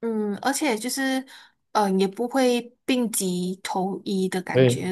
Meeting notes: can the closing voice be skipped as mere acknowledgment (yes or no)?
yes